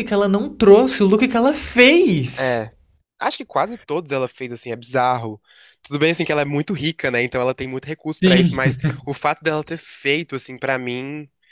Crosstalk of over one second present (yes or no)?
no